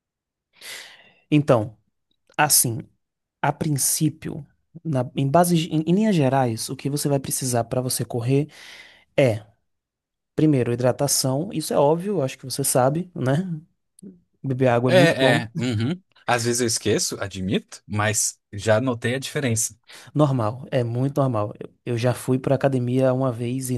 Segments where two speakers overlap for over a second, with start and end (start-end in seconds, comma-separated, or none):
none